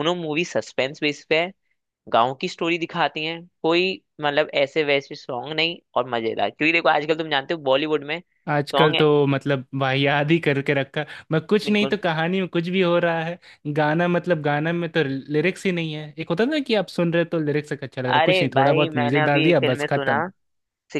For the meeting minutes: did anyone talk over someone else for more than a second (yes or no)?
yes